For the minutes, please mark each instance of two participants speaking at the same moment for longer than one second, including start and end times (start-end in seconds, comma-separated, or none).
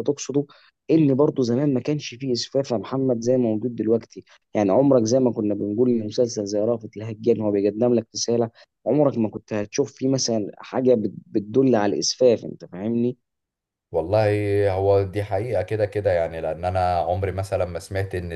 none